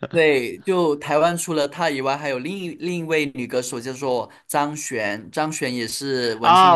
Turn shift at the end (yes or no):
yes